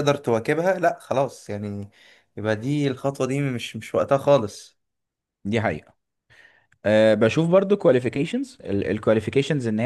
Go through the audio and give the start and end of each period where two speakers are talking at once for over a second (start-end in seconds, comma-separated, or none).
none